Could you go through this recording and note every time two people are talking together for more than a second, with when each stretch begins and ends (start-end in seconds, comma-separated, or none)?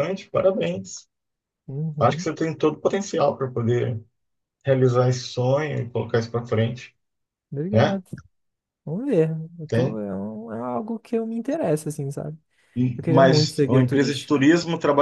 12.9-14.4